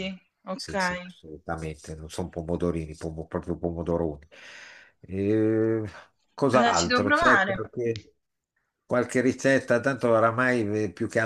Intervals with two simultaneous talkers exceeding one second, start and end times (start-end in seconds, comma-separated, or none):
6.5-7.7